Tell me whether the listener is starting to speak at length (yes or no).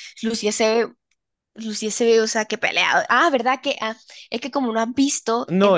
yes